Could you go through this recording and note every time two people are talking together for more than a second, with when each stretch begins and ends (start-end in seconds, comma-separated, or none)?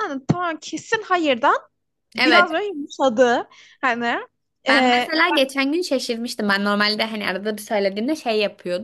none